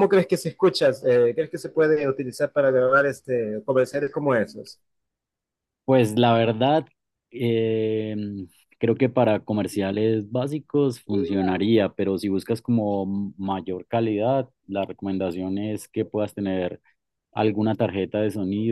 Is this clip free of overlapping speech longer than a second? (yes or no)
yes